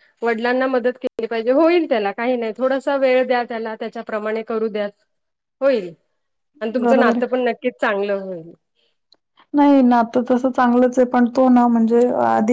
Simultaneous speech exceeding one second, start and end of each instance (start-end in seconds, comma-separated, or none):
none